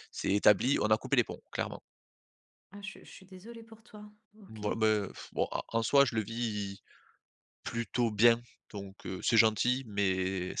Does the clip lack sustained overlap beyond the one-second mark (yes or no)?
yes